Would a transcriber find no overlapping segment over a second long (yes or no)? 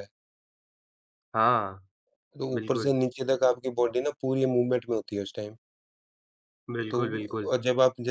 yes